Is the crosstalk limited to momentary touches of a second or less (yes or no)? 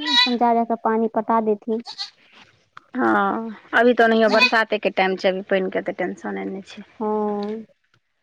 yes